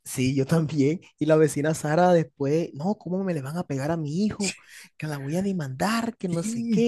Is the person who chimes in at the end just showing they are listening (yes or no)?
no